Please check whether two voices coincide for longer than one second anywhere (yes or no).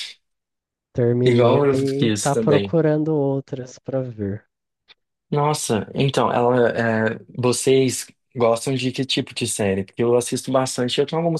yes